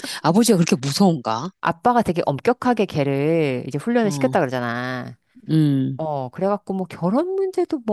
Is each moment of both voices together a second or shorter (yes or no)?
yes